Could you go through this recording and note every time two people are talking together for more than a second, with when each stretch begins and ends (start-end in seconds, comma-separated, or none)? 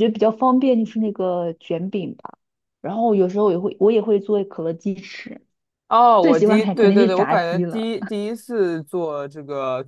6.2-7.9